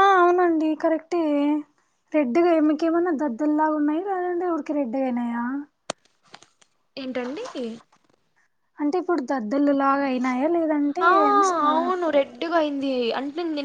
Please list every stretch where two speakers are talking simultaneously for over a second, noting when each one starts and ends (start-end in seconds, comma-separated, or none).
none